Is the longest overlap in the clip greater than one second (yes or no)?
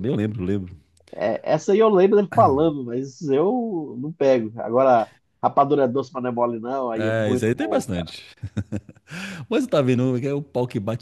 yes